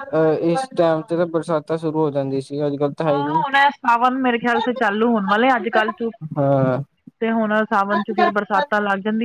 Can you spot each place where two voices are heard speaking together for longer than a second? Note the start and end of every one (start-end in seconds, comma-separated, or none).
none